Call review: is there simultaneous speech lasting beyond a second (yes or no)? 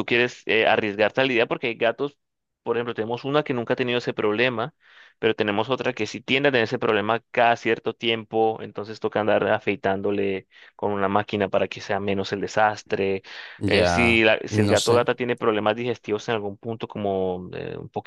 yes